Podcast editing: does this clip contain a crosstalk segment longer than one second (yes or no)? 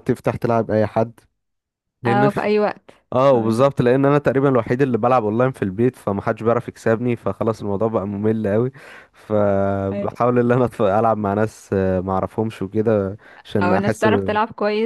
no